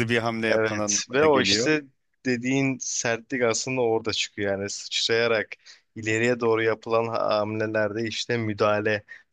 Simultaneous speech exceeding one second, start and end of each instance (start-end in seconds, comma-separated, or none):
0.5-1.7